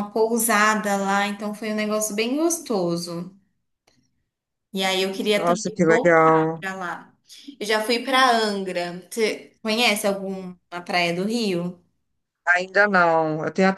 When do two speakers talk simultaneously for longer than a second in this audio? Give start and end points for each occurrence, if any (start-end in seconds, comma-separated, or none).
5.3-6.6